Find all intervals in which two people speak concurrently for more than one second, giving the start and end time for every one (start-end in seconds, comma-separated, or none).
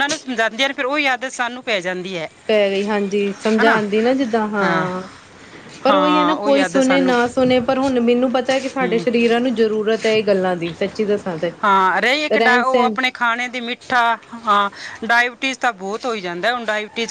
5.9-7.1